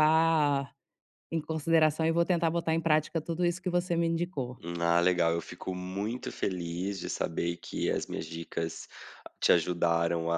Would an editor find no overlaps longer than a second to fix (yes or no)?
yes